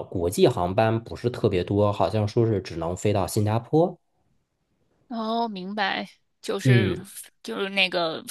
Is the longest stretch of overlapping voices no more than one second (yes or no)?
yes